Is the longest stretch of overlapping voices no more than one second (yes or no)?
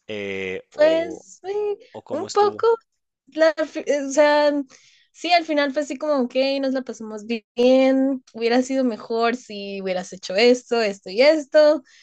yes